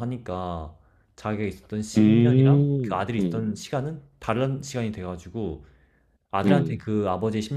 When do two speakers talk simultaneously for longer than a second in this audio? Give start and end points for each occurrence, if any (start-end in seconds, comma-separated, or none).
2.0-3.5